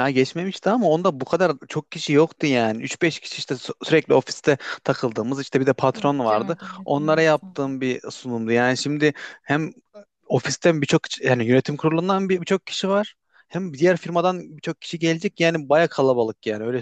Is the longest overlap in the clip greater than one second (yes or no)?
yes